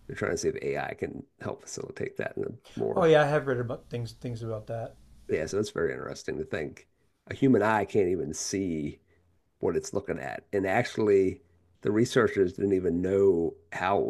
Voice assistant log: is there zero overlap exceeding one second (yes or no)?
yes